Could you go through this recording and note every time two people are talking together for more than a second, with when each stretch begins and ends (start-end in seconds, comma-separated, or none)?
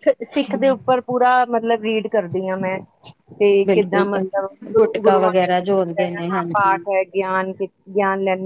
3.7-6.8